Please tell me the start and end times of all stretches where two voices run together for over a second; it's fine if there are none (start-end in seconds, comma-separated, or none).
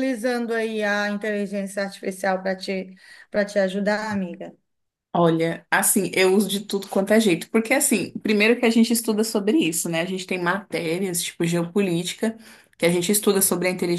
none